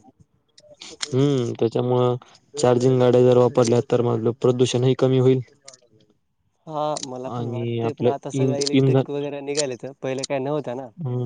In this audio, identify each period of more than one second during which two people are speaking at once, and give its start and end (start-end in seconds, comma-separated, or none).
7.4-9.0